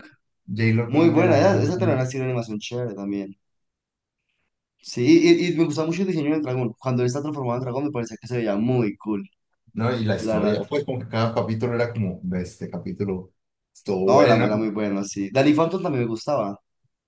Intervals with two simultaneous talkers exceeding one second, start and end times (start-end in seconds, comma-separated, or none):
0.8-2.1